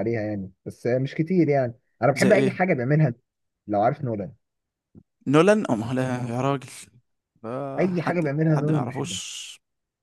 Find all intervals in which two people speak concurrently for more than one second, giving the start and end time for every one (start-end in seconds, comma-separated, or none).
7.8-9.2